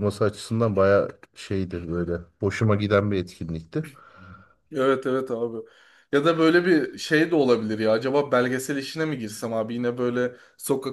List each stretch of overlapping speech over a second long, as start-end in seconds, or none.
none